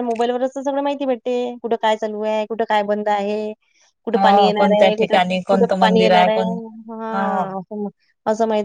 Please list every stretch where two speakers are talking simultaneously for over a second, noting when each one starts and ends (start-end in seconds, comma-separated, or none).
4.1-6.3